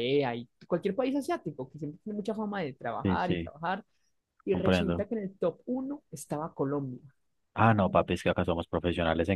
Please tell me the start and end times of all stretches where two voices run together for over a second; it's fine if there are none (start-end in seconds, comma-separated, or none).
none